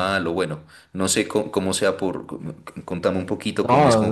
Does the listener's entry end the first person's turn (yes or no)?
yes